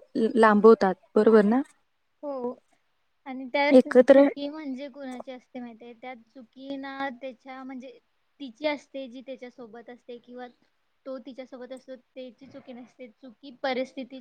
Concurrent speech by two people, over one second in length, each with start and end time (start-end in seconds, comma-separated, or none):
none